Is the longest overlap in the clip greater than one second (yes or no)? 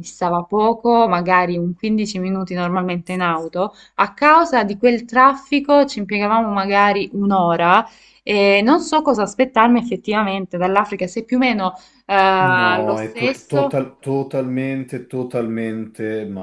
yes